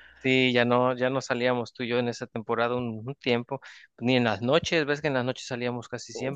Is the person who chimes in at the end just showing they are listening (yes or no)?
no